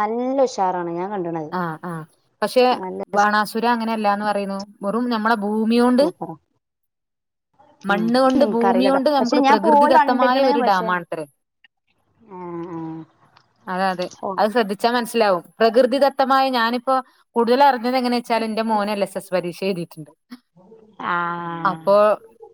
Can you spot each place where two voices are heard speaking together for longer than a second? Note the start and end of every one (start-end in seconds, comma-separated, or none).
7.9-10.9